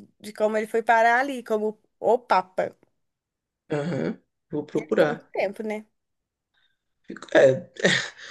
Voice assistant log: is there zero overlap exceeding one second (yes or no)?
yes